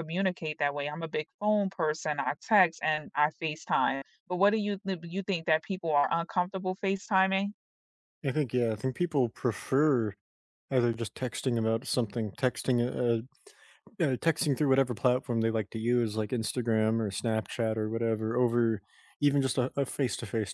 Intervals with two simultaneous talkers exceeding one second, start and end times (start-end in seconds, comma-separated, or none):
none